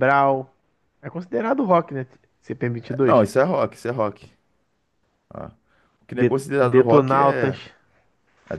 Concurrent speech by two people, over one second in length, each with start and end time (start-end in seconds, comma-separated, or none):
6.1-7.6